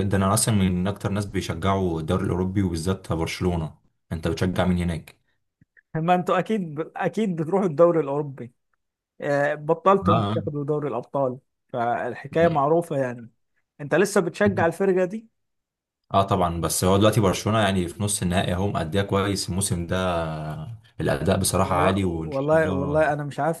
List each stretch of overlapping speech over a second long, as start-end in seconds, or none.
21.6-23.0